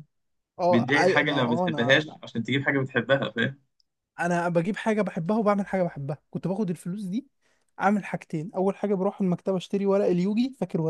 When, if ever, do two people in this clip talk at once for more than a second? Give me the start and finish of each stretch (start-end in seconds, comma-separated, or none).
0.7-2.2